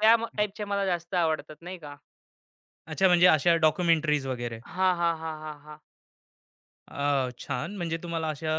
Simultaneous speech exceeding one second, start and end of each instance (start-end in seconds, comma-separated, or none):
none